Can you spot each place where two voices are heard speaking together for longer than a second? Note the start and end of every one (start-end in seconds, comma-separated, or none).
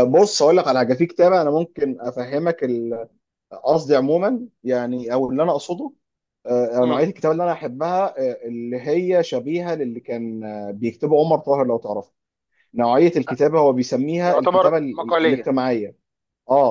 14.2-15.5